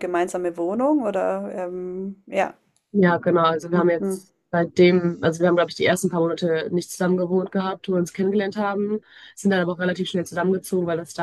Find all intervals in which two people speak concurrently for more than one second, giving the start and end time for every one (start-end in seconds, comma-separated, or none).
none